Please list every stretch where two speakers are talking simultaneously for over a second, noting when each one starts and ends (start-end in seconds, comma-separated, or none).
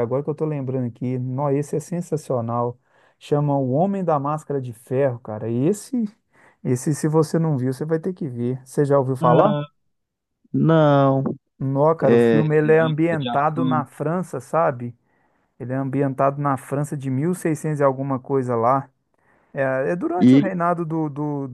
12.0-13.8